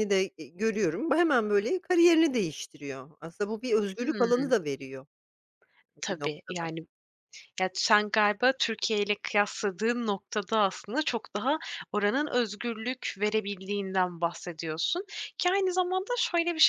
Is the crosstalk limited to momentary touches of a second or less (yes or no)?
yes